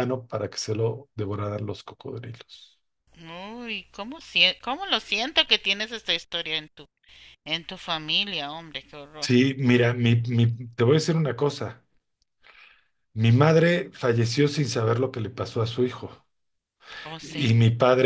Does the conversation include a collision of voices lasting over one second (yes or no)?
no